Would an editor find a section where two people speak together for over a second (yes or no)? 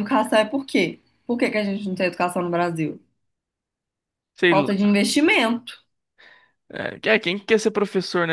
no